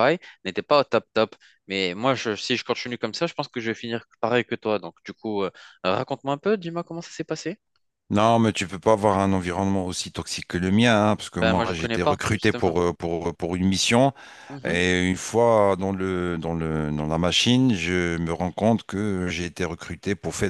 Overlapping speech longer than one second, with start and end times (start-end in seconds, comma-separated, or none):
11.3-12.8